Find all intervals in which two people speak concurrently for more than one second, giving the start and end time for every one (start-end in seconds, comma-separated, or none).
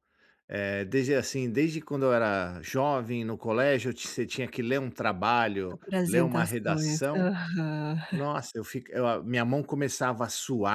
5.7-7.3